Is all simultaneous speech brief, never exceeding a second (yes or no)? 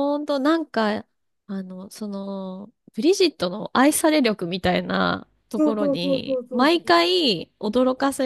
no